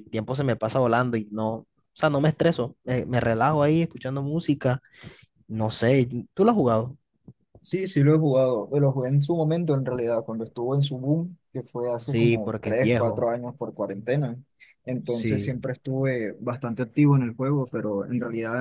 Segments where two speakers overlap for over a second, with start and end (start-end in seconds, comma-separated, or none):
12.0-13.3